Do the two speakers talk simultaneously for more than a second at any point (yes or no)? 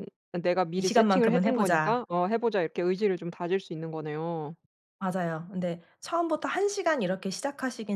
yes